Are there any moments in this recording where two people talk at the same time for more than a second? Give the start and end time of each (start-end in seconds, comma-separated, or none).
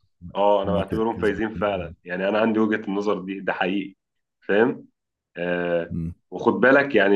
0.6-2.0